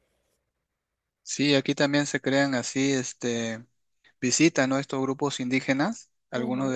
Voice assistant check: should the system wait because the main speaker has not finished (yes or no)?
yes